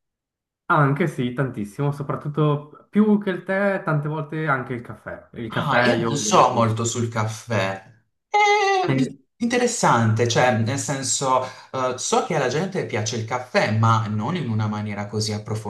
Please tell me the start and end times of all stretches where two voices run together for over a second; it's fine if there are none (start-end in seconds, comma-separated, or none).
5.5-6.7